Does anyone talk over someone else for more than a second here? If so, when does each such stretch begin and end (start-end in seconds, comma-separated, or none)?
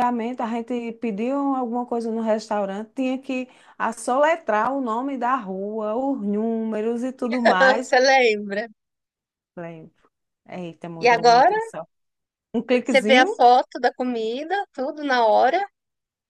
none